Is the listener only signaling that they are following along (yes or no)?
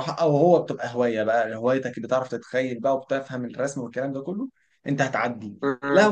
yes